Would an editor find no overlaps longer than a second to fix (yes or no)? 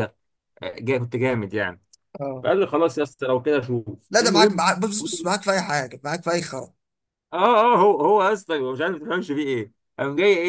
yes